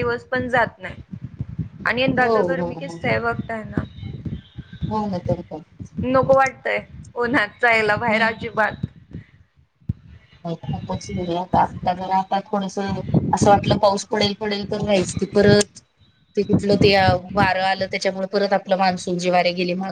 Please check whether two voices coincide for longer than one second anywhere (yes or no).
no